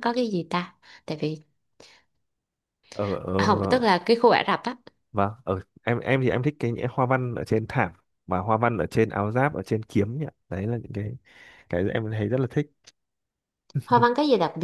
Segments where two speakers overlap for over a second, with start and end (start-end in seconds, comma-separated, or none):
none